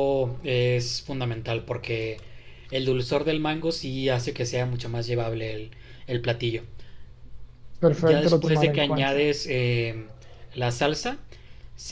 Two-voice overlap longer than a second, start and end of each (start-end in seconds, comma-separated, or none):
8.0-9.3